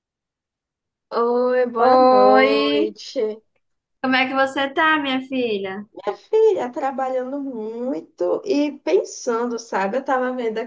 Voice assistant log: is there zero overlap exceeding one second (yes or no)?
no